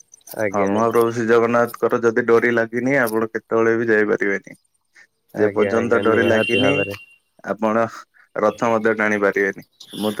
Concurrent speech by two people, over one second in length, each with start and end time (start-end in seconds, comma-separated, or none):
5.4-7.0